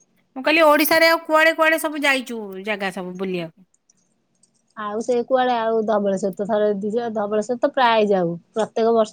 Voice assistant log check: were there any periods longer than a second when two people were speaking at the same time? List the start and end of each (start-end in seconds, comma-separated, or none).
none